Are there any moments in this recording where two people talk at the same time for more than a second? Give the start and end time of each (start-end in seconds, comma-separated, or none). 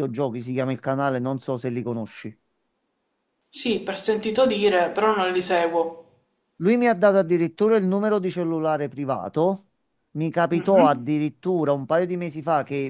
none